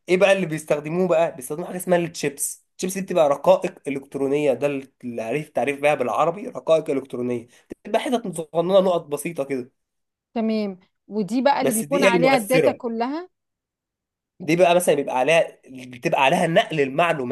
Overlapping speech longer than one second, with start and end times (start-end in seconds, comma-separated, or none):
11.6-12.8